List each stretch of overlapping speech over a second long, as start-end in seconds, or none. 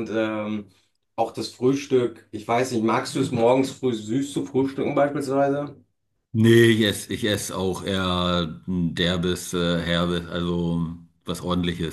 none